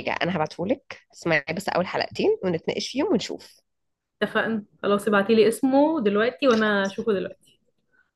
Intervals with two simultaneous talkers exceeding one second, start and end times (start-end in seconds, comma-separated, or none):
none